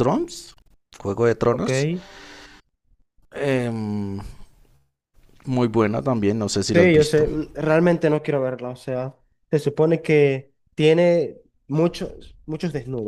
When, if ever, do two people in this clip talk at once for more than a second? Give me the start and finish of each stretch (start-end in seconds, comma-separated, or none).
none